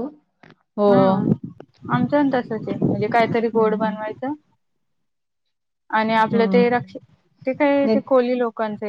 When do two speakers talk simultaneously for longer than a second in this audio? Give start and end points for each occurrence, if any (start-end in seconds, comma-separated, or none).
none